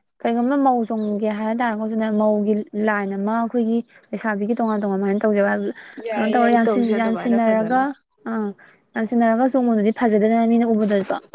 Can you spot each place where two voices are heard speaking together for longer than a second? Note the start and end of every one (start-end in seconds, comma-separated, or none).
6.3-7.8